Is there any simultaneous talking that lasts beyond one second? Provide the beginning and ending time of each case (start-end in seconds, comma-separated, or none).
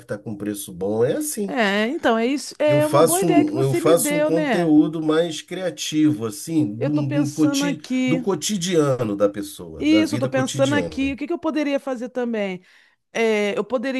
2.7-4.7, 6.8-8.3, 9.8-11.2